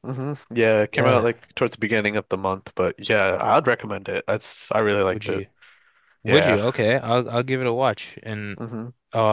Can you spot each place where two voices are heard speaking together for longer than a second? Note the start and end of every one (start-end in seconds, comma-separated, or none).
none